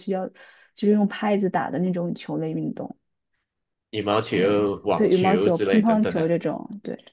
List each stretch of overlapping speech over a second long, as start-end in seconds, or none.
4.3-6.3